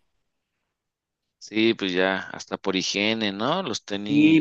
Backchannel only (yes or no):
no